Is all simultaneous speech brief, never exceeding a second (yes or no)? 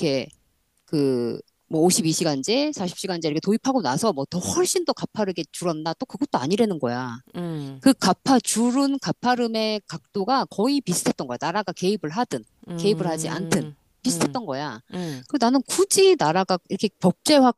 no